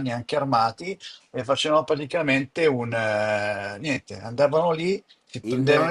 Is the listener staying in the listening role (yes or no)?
yes